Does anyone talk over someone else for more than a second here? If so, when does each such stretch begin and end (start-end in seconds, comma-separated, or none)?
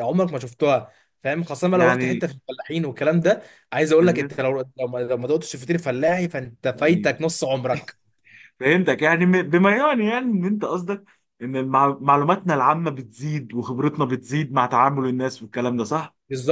none